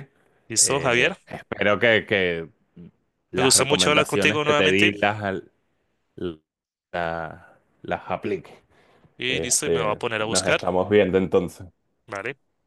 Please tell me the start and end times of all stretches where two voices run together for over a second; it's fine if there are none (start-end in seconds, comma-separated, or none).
3.4-4.9, 9.3-10.6